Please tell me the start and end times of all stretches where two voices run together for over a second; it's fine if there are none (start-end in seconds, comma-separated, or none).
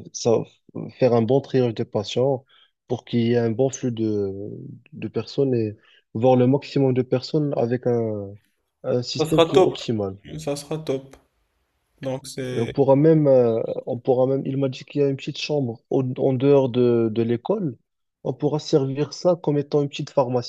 none